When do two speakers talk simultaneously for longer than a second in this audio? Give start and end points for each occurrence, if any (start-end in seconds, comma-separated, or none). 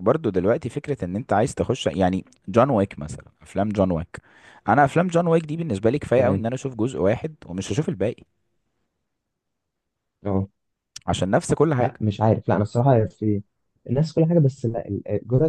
none